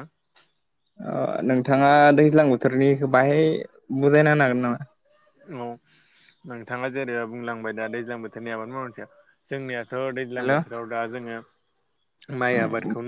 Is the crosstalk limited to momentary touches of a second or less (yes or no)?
yes